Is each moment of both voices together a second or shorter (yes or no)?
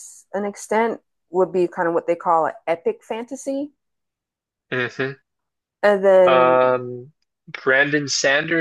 yes